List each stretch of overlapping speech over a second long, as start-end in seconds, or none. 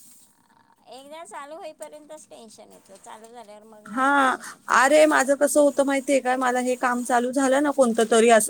none